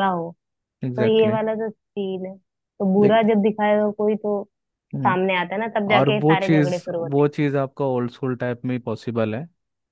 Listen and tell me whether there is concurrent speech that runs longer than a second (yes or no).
yes